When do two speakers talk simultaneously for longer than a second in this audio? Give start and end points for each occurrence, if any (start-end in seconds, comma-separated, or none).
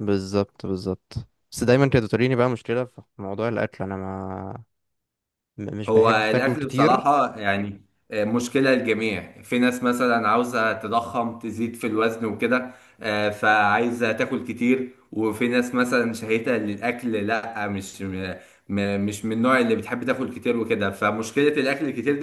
5.9-7.1